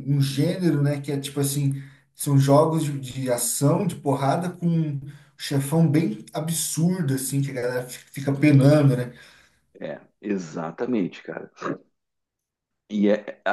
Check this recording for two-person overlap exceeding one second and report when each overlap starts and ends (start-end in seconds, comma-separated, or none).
none